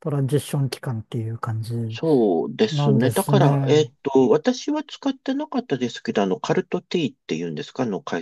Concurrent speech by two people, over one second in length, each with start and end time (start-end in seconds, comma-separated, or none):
2.7-3.9